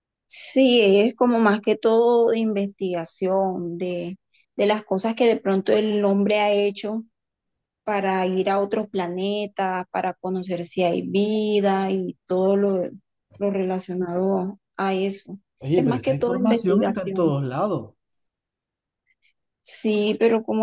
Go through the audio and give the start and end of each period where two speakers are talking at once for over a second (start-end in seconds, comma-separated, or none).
15.8-17.3